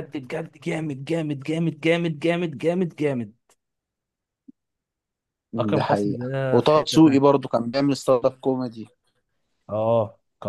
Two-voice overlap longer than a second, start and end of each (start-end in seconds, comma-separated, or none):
5.7-7.3